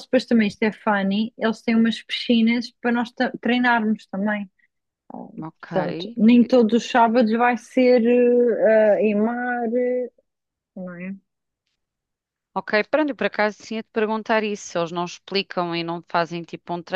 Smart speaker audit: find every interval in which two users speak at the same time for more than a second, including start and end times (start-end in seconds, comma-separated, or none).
none